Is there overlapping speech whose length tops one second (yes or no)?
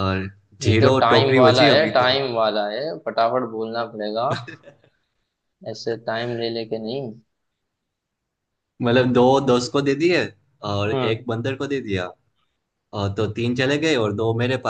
yes